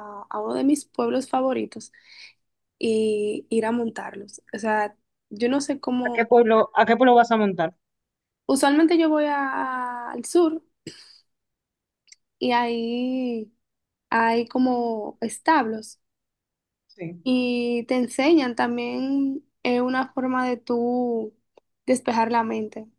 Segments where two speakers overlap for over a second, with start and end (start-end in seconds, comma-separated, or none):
none